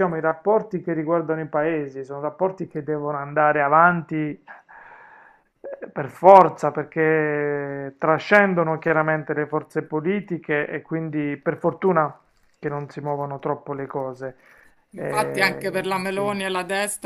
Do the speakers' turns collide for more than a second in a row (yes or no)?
yes